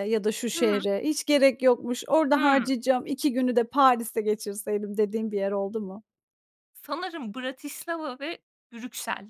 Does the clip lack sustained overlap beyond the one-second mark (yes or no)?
yes